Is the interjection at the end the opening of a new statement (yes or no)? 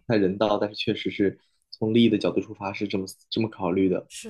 yes